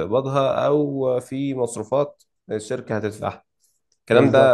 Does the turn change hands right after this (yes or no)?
no